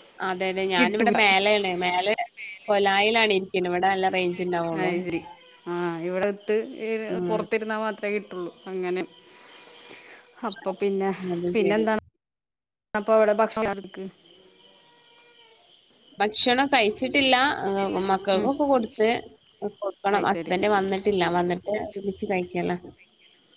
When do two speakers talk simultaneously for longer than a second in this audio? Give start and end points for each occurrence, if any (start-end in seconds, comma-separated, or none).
none